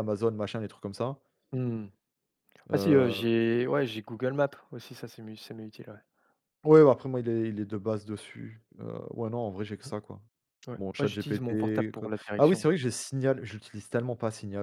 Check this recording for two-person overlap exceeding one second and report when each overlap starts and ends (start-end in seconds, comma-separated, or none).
10.8-12.7